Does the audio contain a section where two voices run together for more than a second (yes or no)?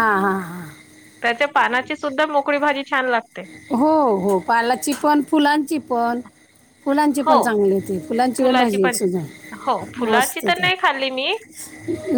yes